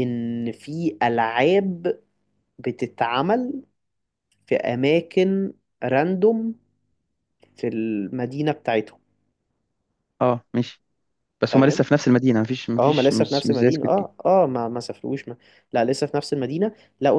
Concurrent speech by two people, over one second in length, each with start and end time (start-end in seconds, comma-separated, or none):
12.8-14.1